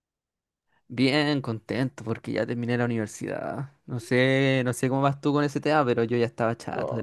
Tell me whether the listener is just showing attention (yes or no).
no